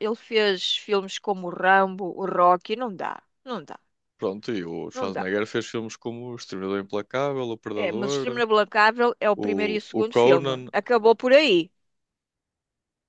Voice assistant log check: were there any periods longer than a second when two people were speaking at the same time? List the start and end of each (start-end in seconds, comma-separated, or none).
9.4-10.7